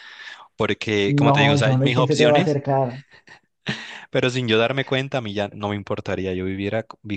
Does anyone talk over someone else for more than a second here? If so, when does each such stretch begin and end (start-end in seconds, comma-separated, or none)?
1.2-2.6